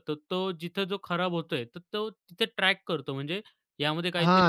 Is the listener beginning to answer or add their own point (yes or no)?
yes